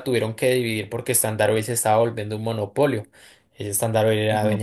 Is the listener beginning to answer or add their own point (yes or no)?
no